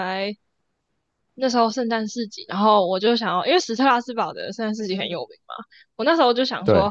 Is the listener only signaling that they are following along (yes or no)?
yes